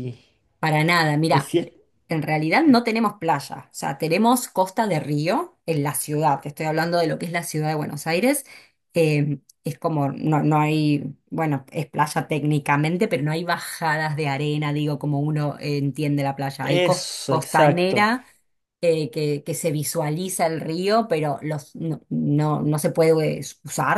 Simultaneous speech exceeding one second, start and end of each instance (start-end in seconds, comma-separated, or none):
16.6-18.1